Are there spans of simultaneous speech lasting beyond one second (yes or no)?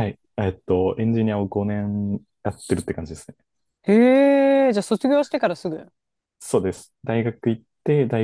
no